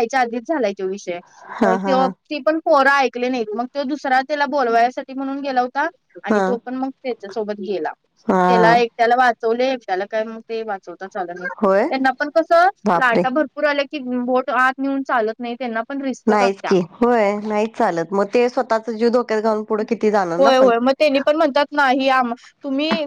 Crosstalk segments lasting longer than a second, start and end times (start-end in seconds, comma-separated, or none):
none